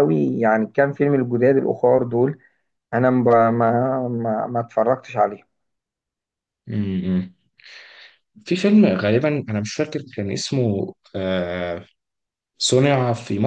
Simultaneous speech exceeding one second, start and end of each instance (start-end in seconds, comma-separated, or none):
none